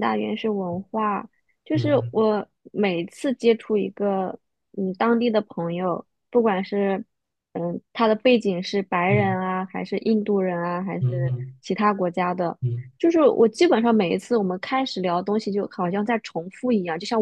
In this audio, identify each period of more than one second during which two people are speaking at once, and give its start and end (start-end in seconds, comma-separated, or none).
none